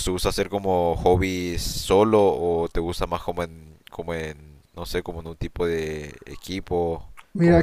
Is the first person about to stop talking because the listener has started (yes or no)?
yes